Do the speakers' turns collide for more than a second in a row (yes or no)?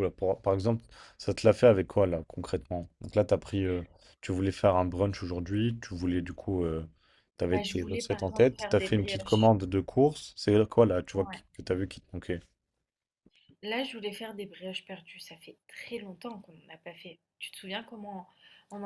yes